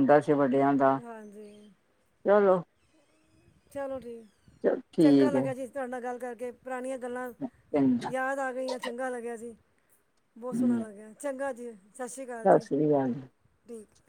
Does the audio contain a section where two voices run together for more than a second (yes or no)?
no